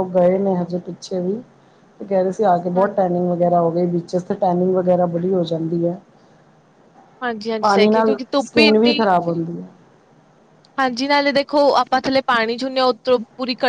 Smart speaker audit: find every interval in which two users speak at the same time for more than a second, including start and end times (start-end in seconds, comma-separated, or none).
7.6-9.0